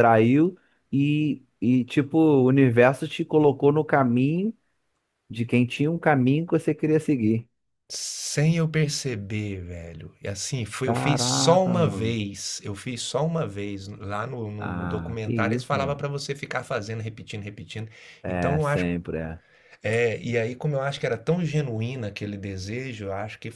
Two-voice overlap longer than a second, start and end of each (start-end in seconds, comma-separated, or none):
10.8-12.2, 14.6-16.1